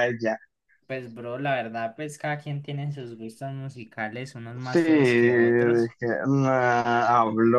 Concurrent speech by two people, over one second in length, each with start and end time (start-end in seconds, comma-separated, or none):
4.6-5.9